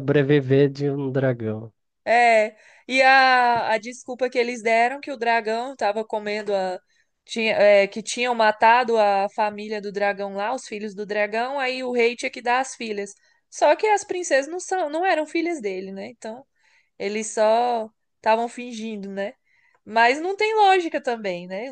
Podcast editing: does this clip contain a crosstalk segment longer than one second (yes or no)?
no